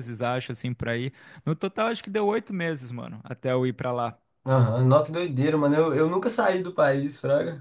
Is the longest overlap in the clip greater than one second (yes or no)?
no